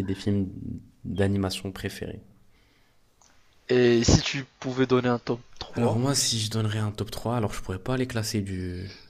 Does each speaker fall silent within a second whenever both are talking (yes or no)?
yes